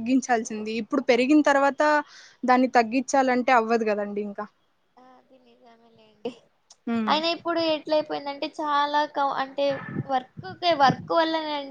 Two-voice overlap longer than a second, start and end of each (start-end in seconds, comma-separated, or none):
none